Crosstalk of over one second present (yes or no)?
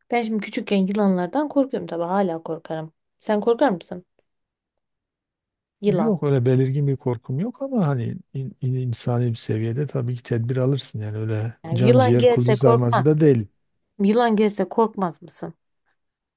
yes